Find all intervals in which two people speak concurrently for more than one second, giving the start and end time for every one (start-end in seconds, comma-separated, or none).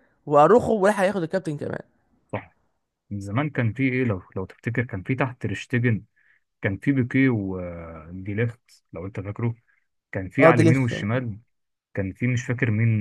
none